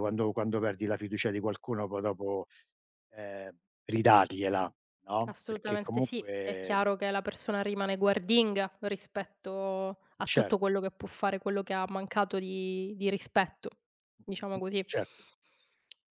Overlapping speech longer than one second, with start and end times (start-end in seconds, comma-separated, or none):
5.2-6.8